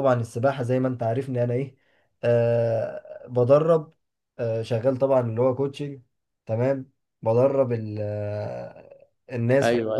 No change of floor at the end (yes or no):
yes